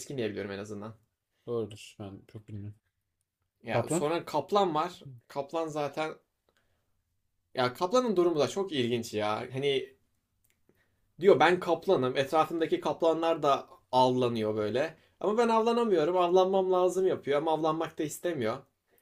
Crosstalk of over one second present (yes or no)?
no